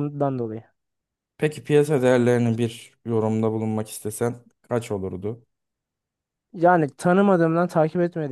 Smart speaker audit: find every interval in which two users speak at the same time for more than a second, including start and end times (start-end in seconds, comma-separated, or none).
none